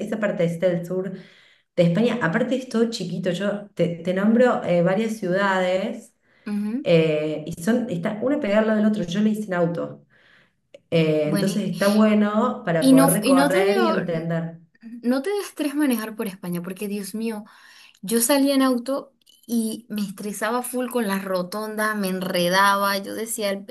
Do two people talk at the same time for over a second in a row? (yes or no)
yes